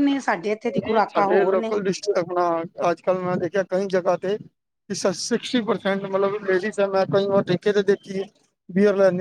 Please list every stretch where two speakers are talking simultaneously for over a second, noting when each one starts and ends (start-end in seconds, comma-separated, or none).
none